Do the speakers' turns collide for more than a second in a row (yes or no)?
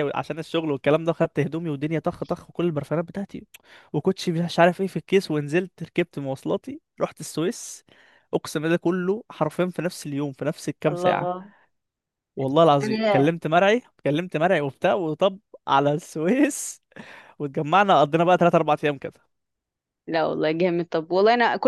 no